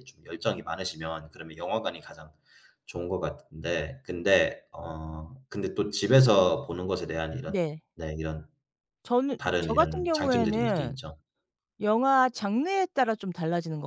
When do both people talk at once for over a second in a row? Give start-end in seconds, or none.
9.4-10.9